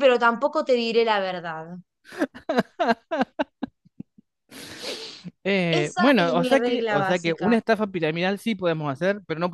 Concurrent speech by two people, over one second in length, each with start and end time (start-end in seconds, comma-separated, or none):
5.7-7.6